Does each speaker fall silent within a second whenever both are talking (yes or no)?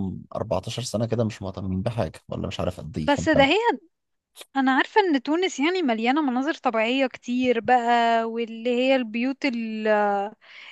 yes